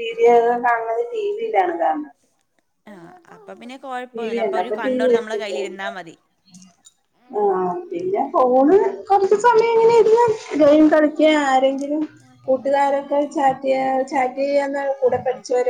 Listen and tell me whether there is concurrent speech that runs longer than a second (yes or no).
yes